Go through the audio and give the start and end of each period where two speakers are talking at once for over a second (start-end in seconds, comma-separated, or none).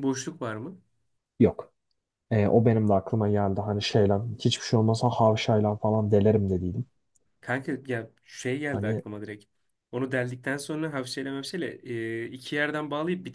none